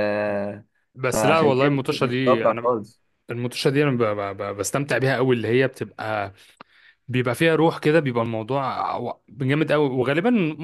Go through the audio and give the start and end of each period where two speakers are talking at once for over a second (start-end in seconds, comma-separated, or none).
1.1-2.8